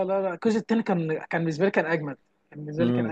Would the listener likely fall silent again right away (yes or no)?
no